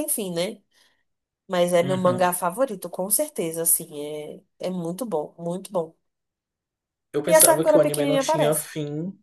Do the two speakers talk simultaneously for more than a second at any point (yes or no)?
yes